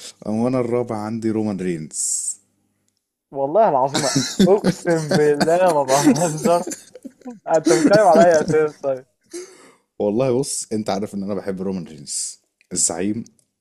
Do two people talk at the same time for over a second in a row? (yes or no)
no